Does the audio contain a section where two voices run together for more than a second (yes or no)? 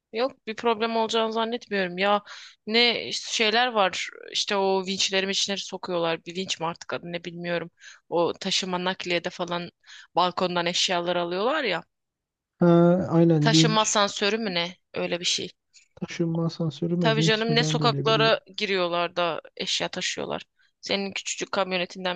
yes